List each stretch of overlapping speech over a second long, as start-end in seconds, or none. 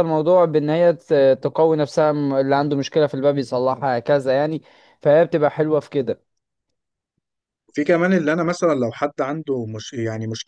none